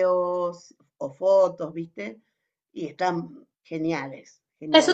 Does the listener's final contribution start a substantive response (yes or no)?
yes